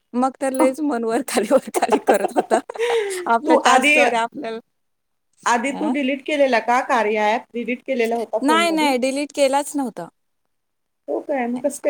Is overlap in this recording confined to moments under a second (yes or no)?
yes